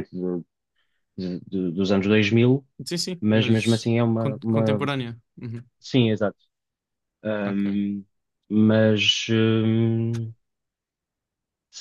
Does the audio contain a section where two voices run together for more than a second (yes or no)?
yes